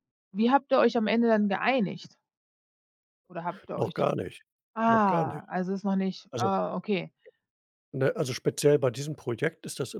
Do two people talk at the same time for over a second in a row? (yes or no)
no